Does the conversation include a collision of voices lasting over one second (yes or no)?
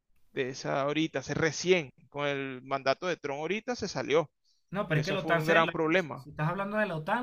yes